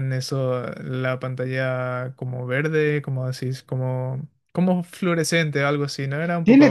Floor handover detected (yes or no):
yes